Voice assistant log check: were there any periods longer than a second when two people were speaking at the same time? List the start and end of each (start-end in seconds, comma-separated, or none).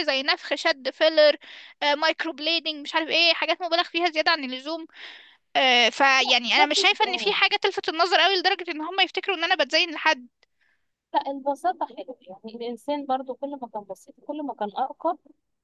none